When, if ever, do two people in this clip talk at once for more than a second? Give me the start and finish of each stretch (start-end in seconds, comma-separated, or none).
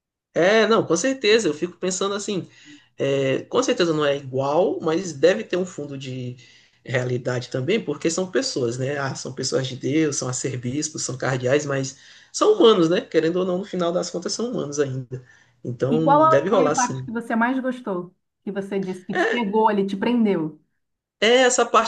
15.9-17.1